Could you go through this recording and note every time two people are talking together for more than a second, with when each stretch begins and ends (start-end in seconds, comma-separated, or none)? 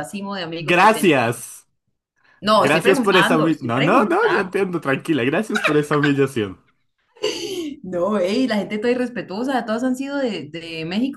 2.5-4.5